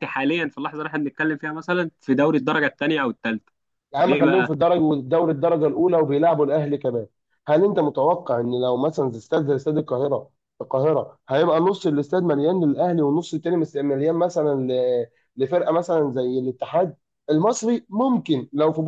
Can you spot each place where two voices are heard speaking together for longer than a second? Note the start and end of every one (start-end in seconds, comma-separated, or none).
none